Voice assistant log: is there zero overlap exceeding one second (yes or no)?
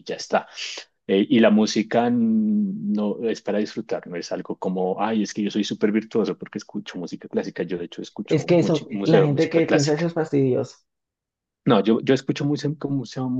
no